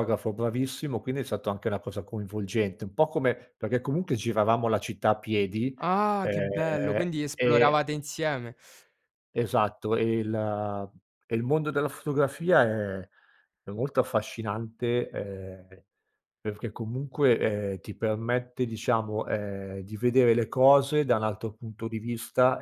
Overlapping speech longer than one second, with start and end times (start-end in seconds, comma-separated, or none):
6.2-7.8